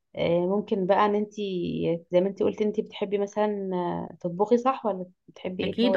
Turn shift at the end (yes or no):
yes